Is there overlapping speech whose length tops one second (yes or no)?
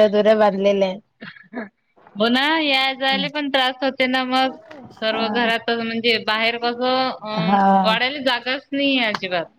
no